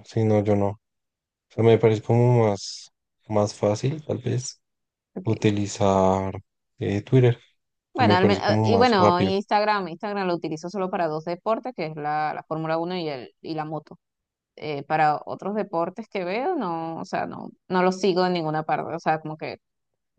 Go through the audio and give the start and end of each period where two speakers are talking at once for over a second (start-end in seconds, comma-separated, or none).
8.0-9.3